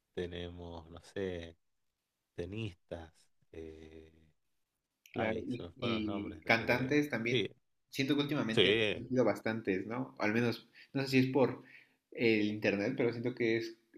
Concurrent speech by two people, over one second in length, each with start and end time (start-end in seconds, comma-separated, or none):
5.1-7.5